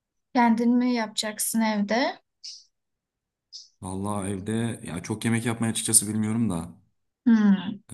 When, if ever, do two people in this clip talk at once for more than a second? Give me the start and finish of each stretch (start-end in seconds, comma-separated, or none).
none